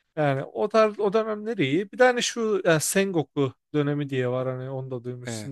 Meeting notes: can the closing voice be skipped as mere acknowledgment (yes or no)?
yes